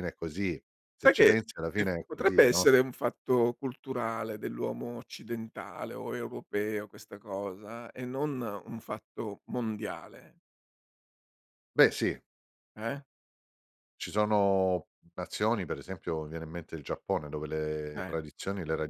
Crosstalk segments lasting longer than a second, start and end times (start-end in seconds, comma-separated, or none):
1.0-2.7